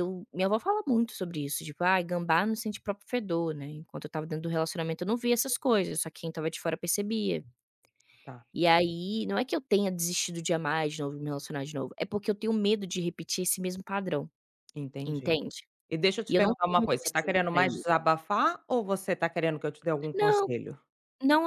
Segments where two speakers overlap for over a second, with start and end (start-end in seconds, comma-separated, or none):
16.3-17.8